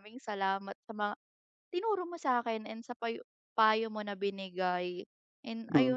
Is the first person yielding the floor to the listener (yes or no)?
yes